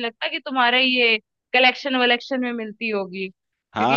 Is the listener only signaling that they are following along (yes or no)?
no